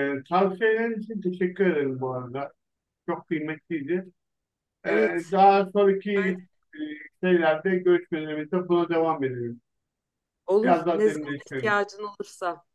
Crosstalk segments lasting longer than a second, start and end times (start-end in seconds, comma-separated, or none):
10.6-11.8